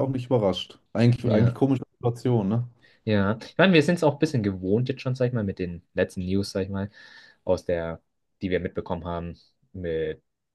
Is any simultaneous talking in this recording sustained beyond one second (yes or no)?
no